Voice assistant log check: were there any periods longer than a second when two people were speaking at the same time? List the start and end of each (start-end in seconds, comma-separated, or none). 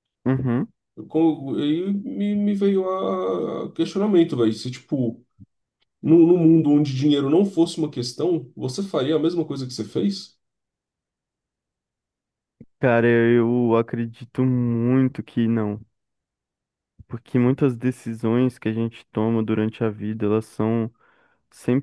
none